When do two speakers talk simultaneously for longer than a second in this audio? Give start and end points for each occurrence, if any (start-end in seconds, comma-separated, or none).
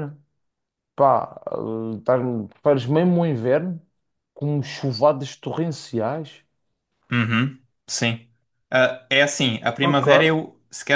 none